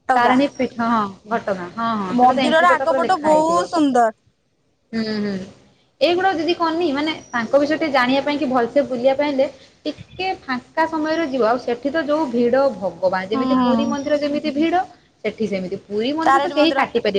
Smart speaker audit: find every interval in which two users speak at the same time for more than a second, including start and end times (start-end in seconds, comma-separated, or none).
2.2-3.7